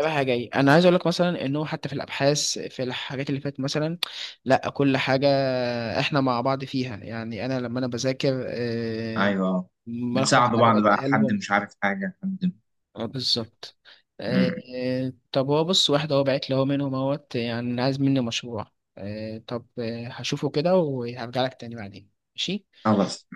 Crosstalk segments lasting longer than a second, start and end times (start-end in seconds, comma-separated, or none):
10.1-11.4